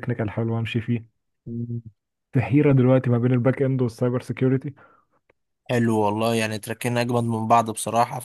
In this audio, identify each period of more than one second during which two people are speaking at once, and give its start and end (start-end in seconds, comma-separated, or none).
none